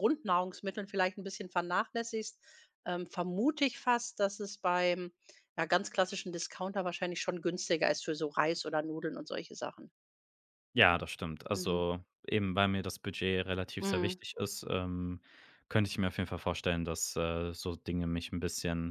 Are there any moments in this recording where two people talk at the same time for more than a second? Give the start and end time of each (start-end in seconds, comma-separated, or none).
none